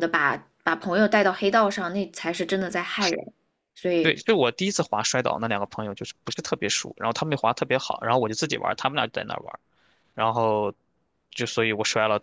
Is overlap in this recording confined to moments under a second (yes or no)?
yes